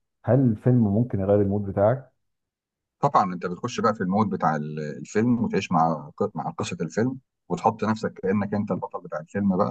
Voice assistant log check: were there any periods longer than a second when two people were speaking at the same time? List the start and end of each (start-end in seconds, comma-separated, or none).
none